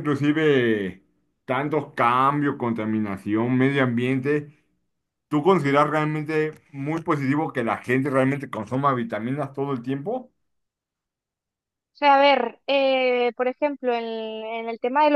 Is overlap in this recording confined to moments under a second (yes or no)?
yes